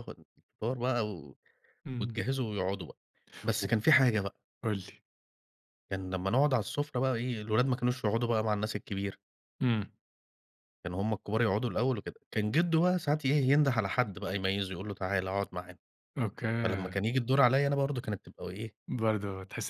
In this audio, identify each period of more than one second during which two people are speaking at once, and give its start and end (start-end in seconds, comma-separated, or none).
none